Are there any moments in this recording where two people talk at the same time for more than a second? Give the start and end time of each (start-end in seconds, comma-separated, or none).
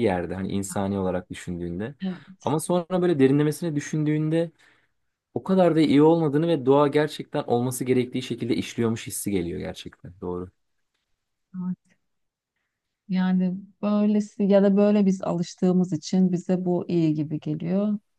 none